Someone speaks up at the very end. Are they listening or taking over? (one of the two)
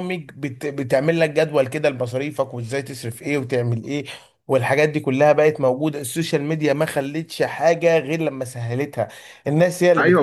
taking over